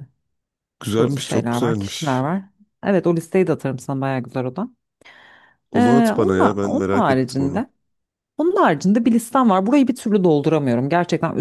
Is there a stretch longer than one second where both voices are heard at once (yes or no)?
yes